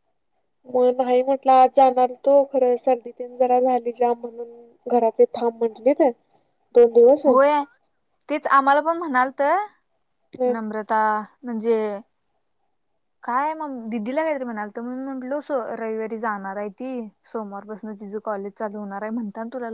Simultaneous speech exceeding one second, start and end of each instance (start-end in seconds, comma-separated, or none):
none